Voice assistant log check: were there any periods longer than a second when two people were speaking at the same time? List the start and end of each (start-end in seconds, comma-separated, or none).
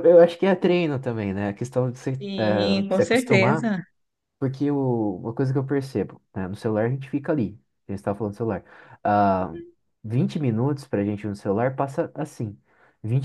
2.2-3.7